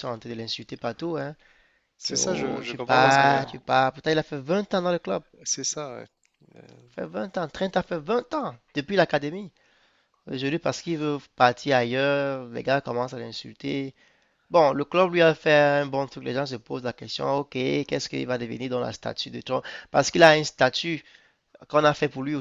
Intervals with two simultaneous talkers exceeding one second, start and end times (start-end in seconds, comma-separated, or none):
2.0-3.5